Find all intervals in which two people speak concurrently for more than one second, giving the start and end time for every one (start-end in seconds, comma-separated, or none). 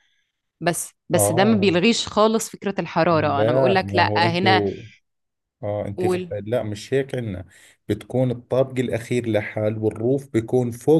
3.1-4.6